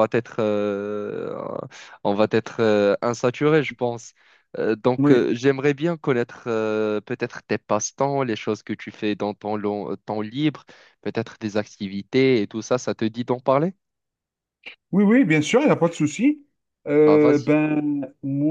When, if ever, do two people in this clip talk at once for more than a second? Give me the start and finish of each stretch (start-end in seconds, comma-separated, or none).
none